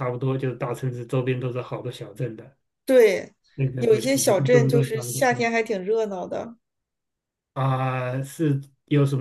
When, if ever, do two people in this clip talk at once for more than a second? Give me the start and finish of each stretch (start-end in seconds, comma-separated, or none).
3.8-5.5